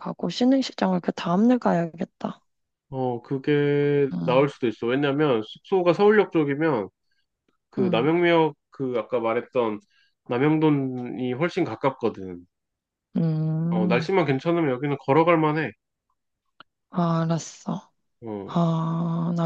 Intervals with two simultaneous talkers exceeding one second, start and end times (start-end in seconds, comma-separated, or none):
none